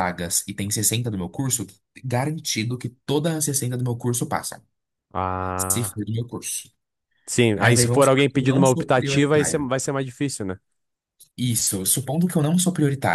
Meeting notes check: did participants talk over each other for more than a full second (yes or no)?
yes